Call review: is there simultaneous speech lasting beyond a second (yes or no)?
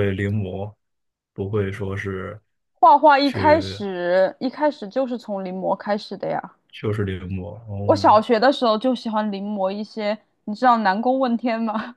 no